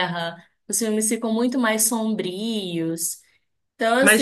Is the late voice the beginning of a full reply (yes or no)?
yes